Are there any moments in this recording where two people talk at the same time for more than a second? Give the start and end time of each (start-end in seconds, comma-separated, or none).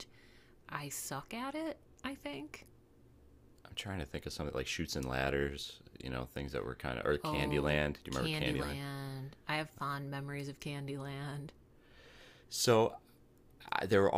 7.2-8.8